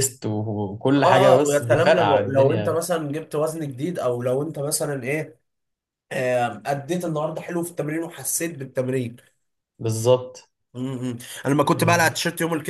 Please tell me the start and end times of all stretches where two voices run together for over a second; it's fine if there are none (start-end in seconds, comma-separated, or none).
1.0-2.8